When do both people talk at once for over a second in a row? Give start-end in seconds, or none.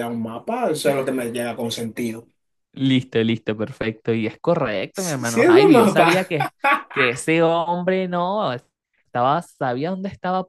4.9-6.3